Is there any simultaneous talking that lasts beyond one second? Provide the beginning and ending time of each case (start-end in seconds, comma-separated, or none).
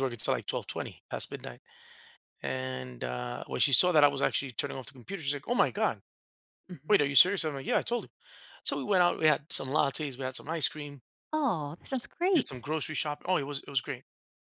none